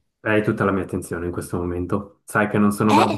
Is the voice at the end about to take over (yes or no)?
no